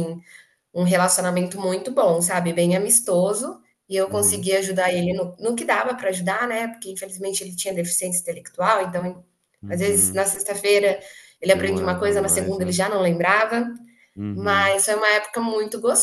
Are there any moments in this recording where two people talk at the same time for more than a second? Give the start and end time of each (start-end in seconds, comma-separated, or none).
11.4-12.8